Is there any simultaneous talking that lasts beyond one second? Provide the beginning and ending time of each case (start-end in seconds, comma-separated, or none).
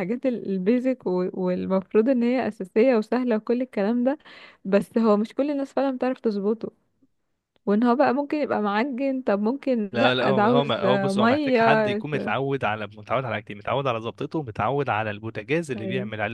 9.9-12.4